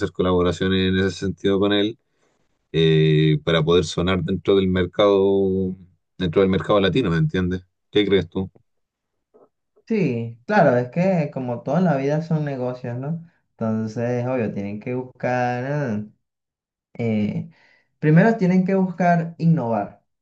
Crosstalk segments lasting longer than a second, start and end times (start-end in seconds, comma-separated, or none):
none